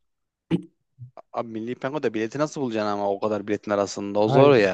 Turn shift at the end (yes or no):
yes